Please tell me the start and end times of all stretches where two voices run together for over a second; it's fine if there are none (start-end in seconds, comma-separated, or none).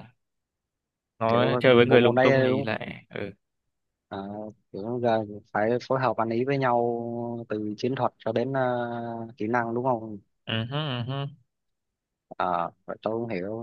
1.3-2.7